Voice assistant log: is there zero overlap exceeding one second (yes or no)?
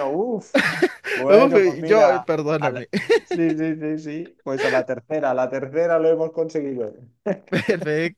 no